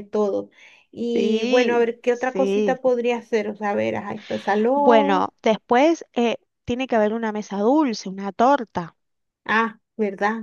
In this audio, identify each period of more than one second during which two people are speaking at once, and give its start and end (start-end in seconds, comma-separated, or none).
1.1-2.8